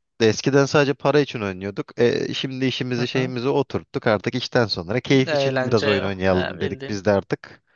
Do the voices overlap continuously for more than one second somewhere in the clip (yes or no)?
yes